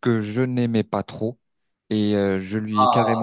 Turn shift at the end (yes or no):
no